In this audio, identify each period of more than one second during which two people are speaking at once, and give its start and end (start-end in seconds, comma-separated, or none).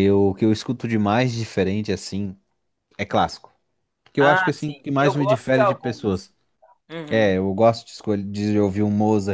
4.2-6.3